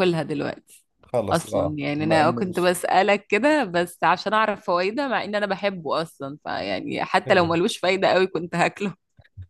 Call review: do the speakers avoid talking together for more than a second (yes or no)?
no